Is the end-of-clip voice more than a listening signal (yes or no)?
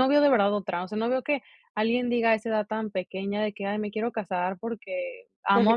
no